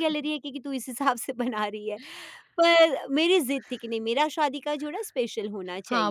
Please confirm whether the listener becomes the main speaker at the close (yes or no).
yes